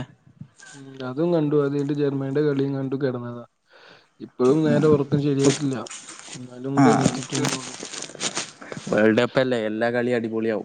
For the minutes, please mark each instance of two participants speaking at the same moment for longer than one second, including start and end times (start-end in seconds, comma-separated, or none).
none